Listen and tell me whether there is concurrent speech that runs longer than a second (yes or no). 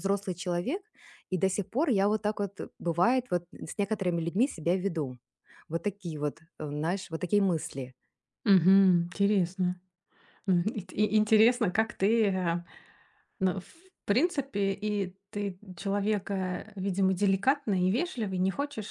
no